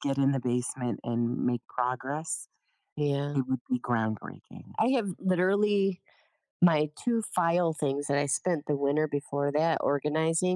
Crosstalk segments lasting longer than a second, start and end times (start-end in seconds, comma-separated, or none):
none